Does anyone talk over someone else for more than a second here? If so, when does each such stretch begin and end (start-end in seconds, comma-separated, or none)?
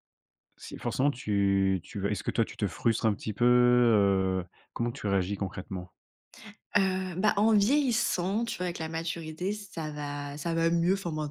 none